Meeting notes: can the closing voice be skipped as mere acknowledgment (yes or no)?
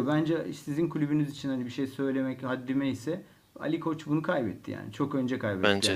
yes